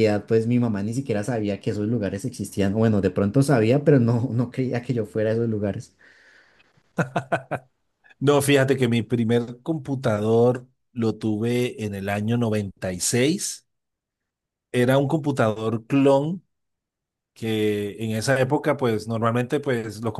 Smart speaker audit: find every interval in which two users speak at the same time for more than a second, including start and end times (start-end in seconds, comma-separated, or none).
none